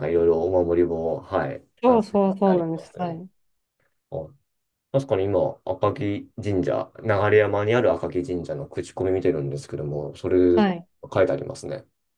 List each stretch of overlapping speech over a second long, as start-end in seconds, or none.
1.8-3.2